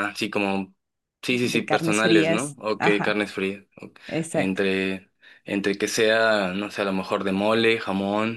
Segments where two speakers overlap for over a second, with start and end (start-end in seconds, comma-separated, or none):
1.3-3.2